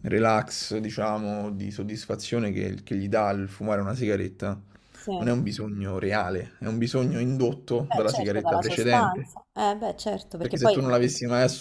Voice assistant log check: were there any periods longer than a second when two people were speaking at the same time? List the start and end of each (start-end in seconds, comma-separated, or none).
7.9-9.3